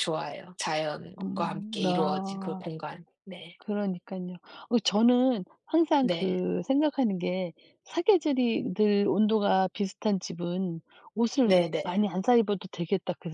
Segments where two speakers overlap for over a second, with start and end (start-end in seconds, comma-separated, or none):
1.2-2.6